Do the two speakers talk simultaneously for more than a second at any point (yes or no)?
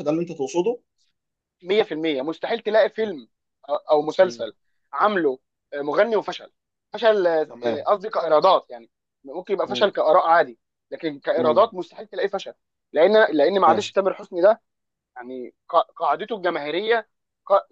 no